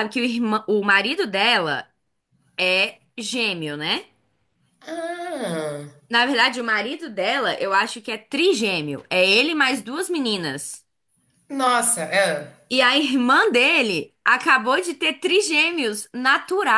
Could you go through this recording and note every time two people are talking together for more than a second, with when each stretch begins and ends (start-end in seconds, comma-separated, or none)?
none